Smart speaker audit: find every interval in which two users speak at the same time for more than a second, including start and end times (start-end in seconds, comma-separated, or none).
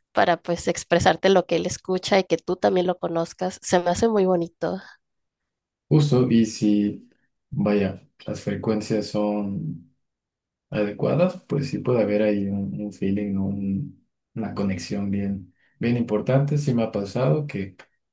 none